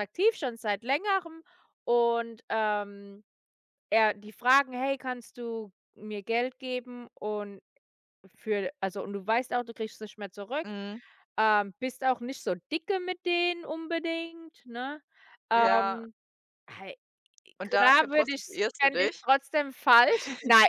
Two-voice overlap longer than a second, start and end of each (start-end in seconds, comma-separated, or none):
17.6-19.3